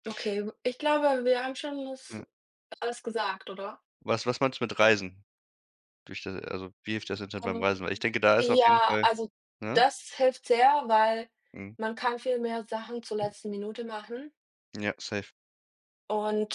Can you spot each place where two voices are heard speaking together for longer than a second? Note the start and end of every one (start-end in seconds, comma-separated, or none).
7.4-9.1